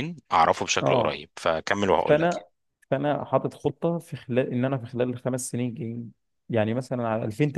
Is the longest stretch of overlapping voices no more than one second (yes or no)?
yes